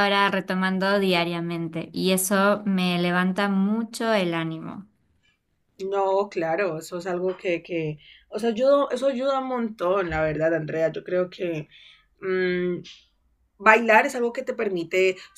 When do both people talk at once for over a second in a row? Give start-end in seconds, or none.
none